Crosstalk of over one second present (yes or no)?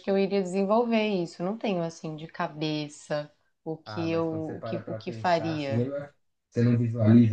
yes